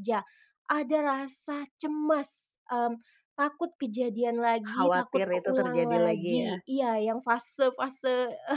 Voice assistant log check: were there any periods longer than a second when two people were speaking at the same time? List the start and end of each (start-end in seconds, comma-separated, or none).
4.7-6.6